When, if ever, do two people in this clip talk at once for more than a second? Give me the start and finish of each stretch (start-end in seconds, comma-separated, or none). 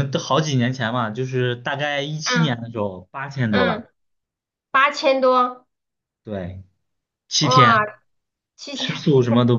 none